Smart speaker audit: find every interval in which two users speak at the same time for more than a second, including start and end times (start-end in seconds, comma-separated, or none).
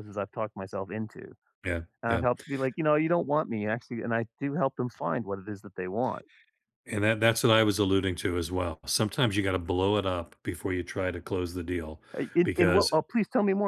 none